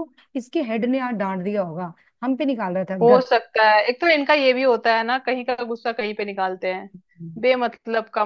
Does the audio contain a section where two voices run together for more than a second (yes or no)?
no